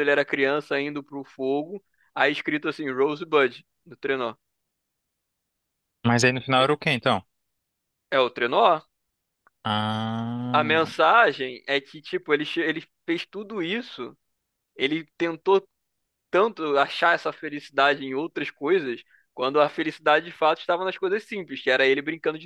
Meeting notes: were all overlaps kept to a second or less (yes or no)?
yes